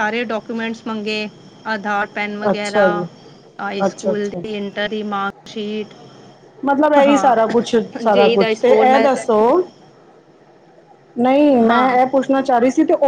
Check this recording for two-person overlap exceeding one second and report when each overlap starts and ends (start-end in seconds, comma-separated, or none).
7.1-9.1